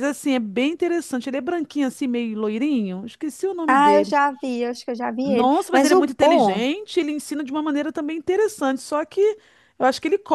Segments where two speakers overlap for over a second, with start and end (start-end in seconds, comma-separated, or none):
5.2-6.7